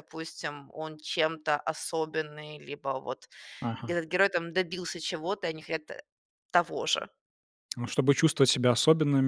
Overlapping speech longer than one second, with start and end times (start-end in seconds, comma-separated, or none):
none